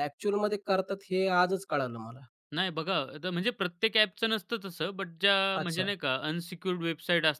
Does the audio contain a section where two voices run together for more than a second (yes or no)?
no